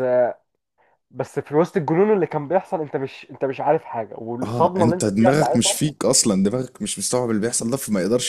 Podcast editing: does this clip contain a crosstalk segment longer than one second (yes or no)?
yes